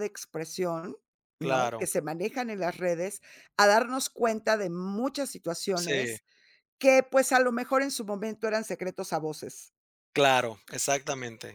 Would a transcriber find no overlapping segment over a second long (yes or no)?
yes